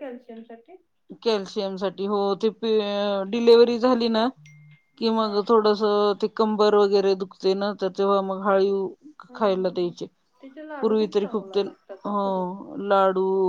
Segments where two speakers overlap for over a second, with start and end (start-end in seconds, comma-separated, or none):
10.8-12.4